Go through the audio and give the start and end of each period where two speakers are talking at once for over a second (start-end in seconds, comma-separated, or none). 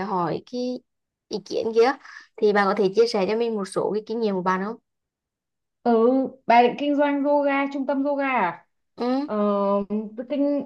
none